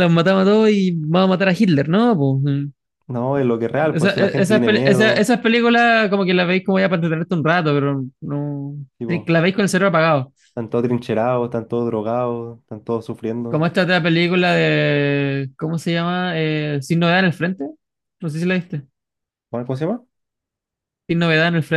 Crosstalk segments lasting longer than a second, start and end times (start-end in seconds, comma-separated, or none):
3.8-5.4